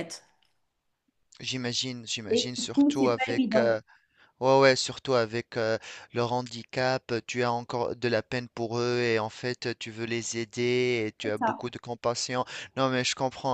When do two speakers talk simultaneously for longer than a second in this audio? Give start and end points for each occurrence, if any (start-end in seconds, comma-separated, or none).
2.3-3.8